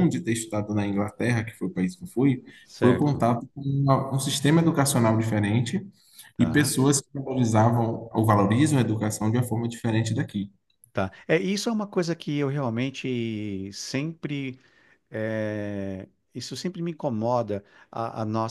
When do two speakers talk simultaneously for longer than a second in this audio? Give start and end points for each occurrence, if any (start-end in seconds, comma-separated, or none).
none